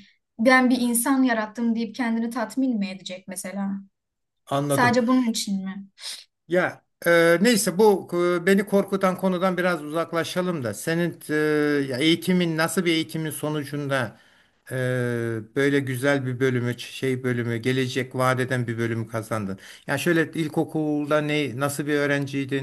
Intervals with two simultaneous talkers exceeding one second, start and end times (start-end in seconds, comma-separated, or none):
none